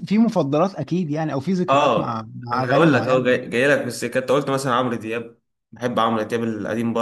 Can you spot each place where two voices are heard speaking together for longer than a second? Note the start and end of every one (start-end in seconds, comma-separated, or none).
1.7-3.4